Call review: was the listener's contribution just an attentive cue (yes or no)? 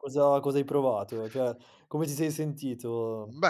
no